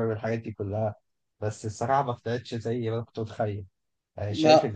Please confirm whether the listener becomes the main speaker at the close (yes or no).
no